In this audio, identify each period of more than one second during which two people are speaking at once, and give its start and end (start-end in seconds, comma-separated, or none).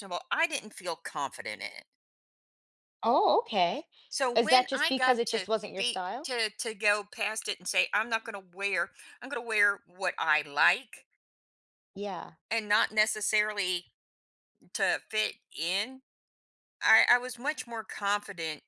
4.3-6.3